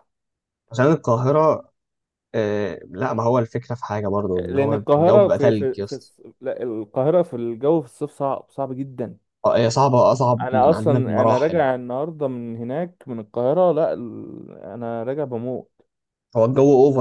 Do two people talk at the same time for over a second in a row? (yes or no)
yes